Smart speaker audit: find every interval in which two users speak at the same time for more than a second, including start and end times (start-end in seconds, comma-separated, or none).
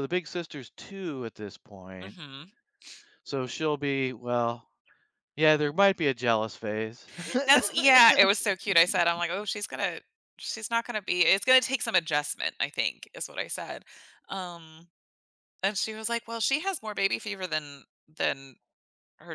none